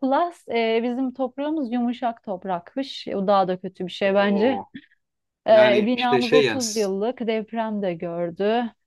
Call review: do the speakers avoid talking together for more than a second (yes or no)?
no